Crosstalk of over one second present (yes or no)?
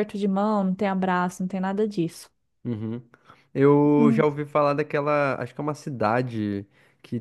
no